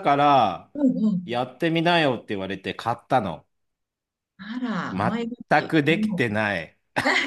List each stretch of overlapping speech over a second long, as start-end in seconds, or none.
4.9-6.4